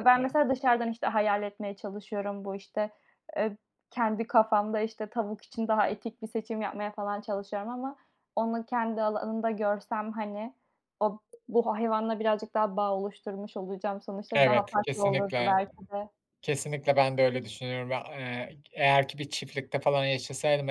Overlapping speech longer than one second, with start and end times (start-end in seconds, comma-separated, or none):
14.3-15.6